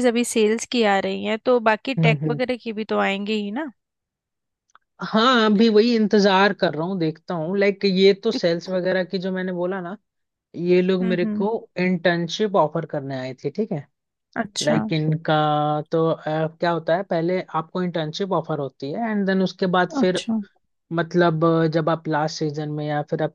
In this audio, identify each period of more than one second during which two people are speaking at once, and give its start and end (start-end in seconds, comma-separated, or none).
none